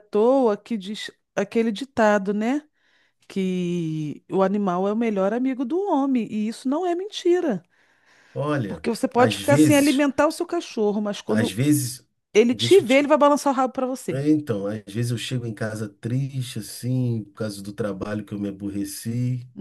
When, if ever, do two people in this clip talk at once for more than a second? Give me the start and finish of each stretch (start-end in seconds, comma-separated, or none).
8.7-10.0